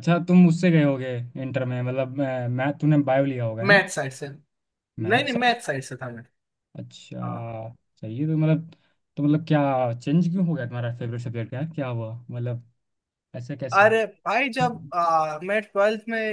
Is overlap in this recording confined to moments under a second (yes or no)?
yes